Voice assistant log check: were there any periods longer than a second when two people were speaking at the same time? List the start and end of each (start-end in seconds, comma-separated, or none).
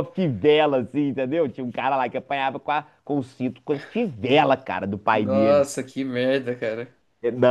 none